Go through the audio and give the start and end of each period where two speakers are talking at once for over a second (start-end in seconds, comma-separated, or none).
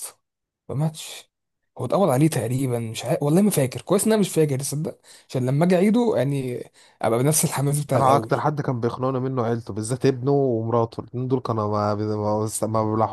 none